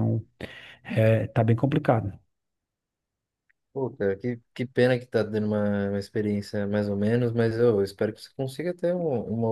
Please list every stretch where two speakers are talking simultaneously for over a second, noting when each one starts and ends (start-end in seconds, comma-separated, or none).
none